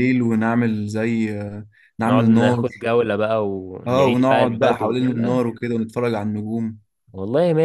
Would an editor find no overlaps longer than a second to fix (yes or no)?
no